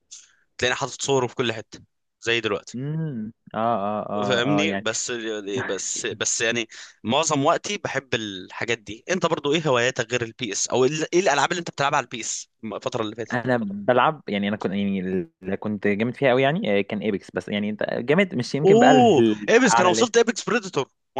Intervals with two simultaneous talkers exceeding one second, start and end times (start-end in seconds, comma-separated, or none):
18.6-20.1